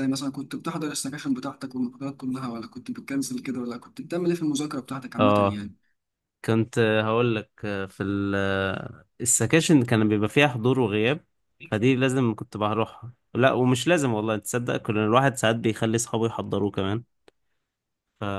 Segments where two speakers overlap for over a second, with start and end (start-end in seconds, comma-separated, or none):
none